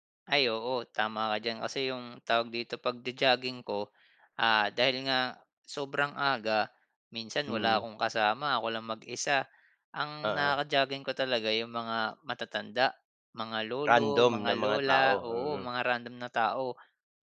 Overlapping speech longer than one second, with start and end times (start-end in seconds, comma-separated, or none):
13.9-15.7